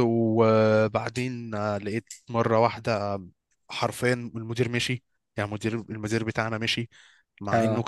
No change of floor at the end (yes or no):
yes